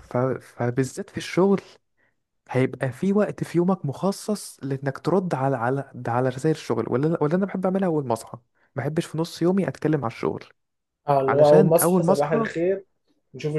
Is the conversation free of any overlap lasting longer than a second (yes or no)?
no